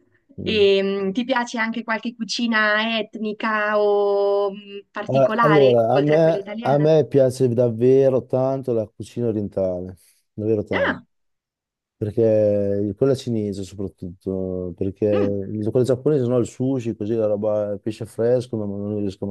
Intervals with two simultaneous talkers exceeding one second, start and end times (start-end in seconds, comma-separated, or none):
5.1-6.9